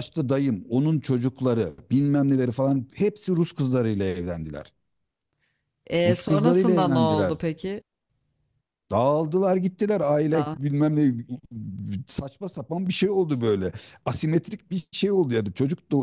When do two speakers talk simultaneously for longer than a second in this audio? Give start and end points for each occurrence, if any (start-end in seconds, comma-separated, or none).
6.0-7.3